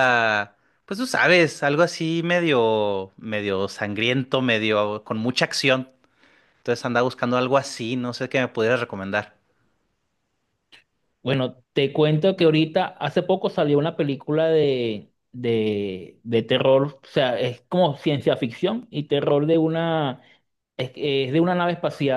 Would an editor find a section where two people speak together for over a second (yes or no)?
no